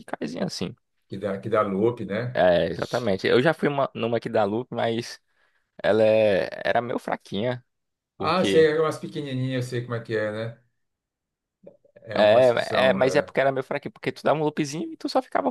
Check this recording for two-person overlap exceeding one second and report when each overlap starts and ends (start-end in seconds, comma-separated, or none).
12.1-13.3